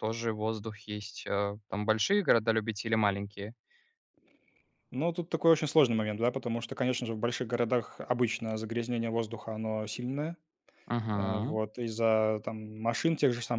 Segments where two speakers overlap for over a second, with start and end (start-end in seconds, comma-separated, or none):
none